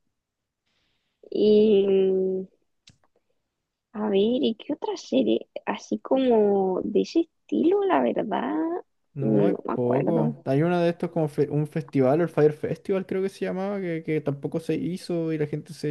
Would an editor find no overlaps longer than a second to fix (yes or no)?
no